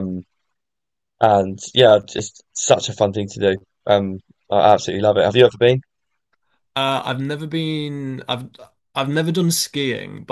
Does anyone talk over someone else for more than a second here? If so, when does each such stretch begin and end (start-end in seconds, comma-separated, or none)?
none